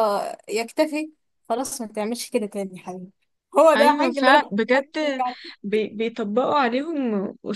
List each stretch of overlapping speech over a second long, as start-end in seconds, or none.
3.8-5.2